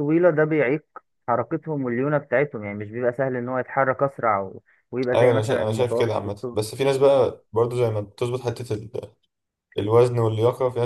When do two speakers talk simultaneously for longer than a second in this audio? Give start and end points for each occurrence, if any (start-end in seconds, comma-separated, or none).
5.1-6.6